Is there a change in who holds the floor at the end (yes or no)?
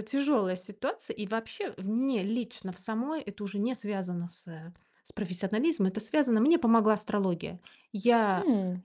no